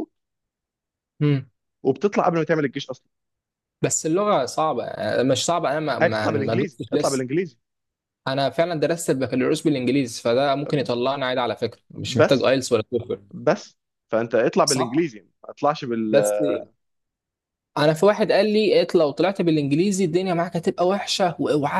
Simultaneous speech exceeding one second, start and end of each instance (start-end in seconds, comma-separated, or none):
6.0-7.2